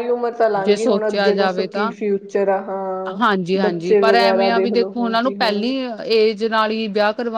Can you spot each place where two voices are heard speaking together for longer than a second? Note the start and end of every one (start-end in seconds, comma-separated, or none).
0.7-1.9, 3.6-5.7